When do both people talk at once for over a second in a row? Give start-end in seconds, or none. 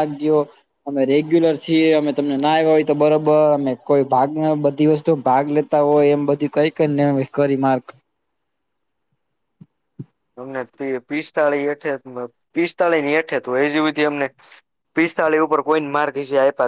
none